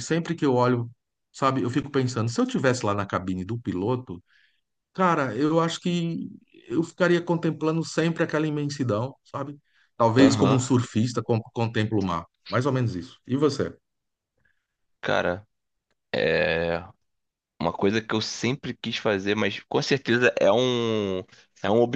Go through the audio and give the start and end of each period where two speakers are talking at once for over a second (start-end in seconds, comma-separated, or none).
none